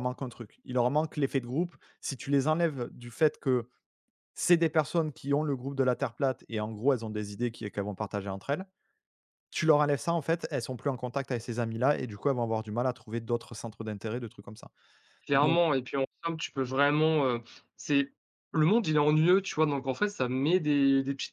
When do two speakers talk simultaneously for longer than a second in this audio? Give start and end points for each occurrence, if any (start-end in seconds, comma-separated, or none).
none